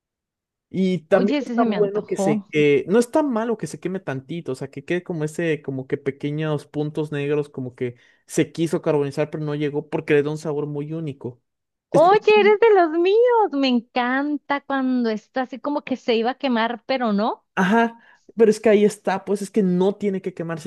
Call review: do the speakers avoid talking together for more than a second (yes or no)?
no